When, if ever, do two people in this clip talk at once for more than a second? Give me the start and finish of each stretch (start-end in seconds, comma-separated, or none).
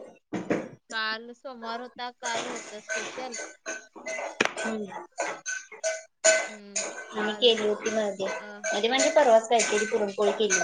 none